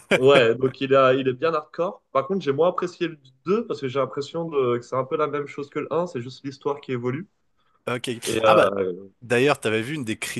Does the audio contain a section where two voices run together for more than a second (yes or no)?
no